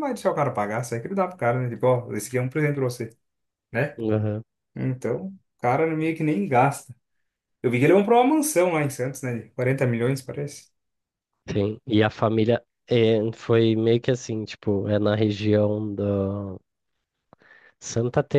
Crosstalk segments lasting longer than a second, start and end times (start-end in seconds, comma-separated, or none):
none